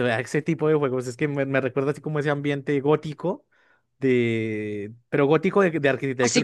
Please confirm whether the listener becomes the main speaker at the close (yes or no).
yes